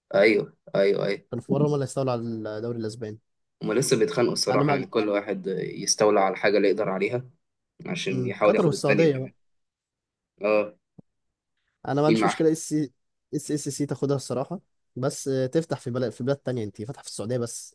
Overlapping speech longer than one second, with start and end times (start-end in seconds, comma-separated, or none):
8.1-9.3